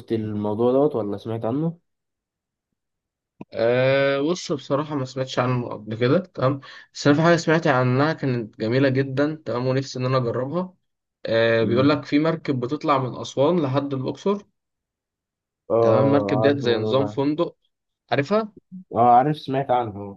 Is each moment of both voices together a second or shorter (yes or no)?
no